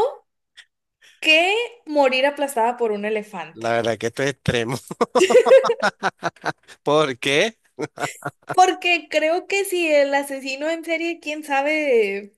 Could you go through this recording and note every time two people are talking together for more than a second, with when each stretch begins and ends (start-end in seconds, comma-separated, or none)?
none